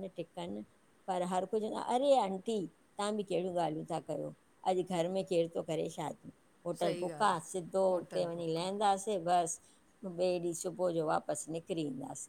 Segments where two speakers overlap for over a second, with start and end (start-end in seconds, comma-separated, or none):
6.8-8.7